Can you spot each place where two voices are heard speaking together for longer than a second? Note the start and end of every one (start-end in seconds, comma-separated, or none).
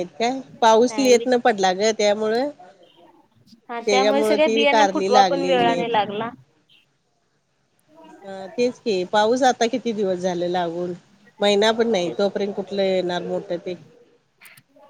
3.8-5.9